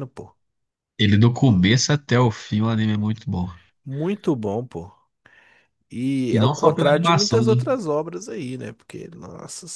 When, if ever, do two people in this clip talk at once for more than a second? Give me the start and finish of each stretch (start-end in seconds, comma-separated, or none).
6.3-7.5